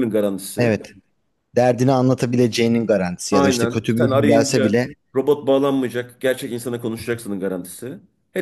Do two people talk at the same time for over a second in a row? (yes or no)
yes